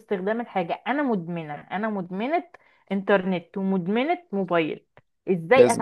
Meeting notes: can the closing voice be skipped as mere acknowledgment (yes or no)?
yes